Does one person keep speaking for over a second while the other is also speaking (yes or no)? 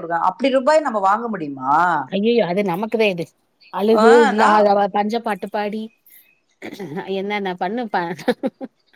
no